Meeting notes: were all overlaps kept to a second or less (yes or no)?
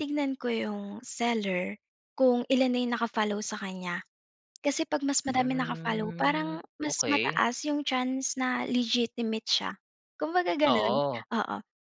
no